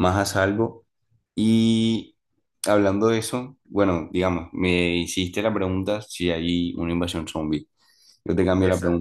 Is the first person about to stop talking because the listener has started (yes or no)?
no